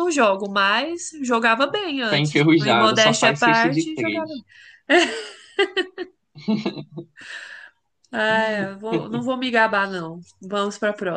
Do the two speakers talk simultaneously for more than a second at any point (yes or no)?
yes